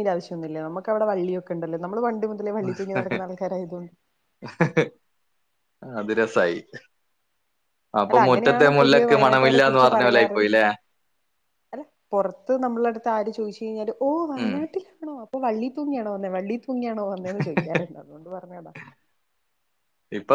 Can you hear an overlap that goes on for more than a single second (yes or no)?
yes